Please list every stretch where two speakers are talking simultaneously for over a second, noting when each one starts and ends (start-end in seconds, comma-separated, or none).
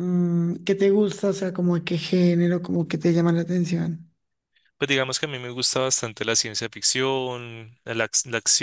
none